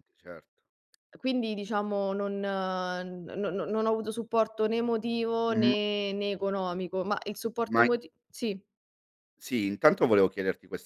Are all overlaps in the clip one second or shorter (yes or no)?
yes